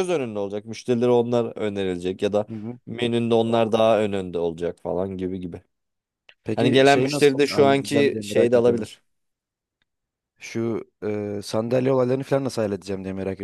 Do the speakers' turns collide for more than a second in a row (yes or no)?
yes